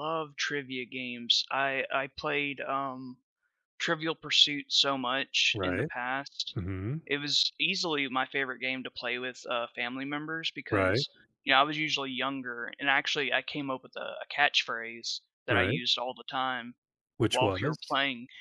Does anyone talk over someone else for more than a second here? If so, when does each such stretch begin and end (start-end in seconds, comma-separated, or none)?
none